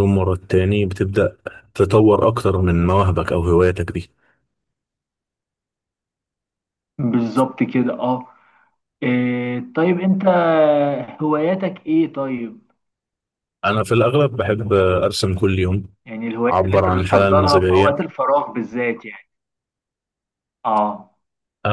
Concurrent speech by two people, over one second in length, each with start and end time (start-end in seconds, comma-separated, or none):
16.5-18.0